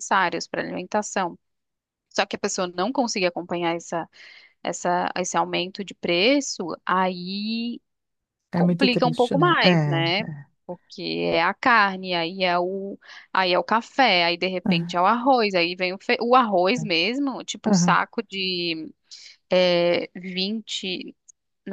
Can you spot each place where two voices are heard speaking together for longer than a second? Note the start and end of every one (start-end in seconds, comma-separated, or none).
8.5-10.2